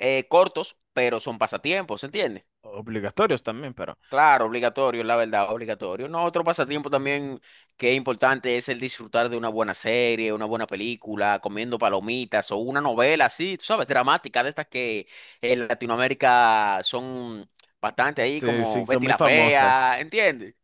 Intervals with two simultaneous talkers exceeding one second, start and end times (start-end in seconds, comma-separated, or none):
18.3-19.9